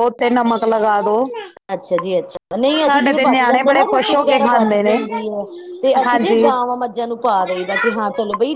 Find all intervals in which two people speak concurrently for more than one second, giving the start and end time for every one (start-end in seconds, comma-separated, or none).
2.9-5.0